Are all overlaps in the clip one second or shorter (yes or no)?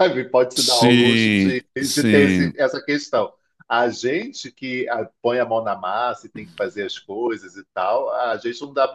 no